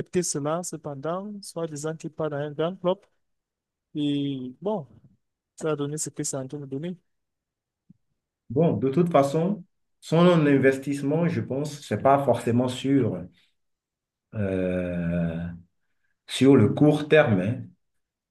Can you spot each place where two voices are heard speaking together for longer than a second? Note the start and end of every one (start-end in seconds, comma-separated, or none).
none